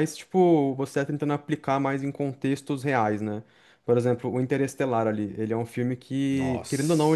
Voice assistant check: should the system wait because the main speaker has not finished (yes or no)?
yes